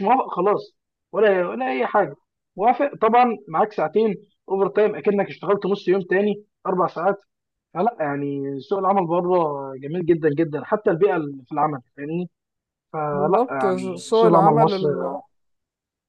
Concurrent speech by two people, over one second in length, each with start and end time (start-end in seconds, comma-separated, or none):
13.1-14.7